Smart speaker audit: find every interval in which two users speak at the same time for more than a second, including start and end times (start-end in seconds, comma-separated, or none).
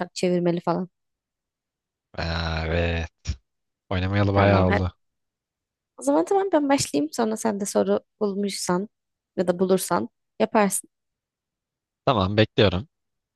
none